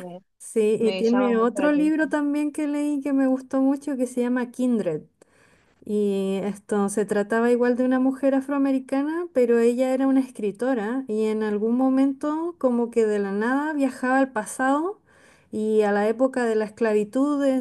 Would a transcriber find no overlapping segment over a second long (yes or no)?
no